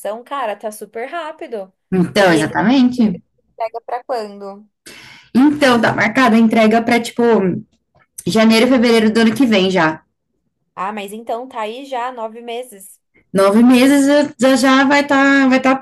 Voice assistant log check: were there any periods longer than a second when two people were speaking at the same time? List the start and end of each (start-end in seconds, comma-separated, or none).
none